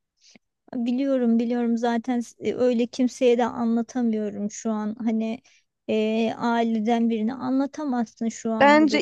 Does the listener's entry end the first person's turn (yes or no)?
yes